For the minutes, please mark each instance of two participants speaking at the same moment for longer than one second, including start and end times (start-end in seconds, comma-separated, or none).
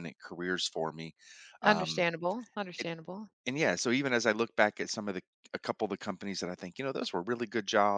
none